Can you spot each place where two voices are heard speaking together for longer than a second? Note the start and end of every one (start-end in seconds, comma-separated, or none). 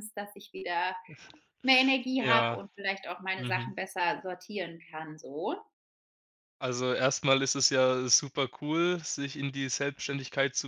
none